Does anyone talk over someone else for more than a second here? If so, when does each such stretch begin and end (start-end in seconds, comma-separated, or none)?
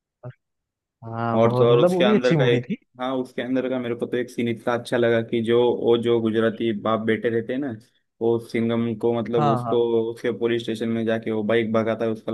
1.4-2.8